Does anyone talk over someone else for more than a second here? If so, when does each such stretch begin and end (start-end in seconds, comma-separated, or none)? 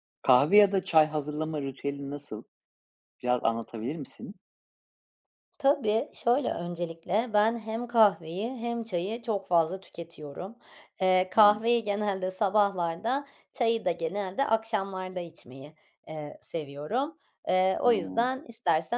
none